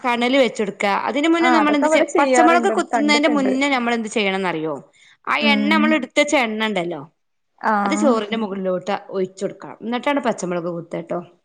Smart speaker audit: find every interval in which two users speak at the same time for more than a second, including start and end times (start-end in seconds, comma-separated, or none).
1.5-3.5